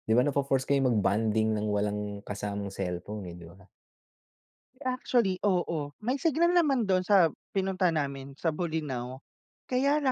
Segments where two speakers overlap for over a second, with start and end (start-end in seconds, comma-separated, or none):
none